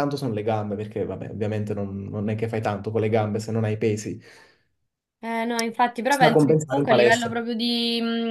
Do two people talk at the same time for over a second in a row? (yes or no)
yes